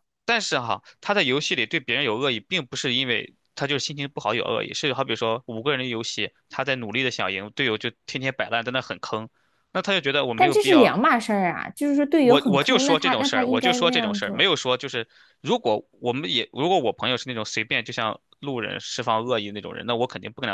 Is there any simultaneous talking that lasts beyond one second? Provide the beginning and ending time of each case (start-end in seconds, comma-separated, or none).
12.2-14.5